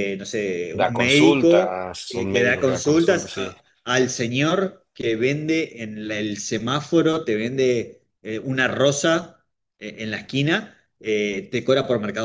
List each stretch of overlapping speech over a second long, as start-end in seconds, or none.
0.8-3.5